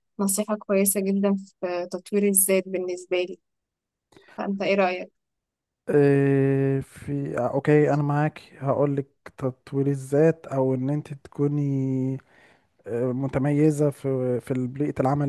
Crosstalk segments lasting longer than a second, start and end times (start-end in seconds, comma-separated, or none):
none